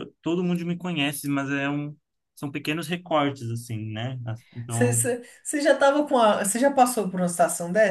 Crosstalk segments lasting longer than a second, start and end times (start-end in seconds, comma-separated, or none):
none